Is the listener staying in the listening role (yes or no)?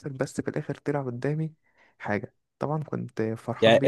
no